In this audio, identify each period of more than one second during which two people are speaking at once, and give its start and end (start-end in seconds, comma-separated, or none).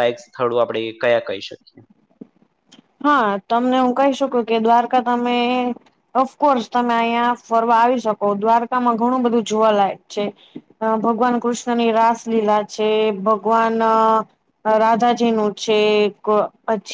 none